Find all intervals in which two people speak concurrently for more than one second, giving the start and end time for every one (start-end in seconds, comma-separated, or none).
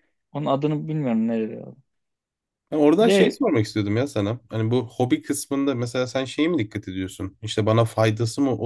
none